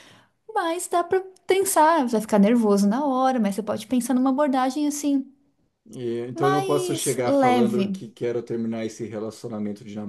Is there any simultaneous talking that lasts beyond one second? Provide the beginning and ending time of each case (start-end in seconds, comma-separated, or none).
6.3-8.0